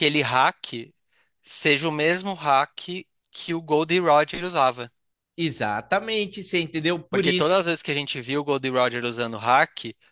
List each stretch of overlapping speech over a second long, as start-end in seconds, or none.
none